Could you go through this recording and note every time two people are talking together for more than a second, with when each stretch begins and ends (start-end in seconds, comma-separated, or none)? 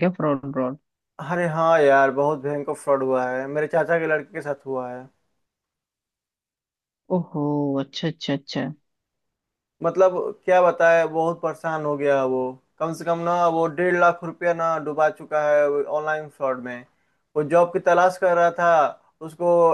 none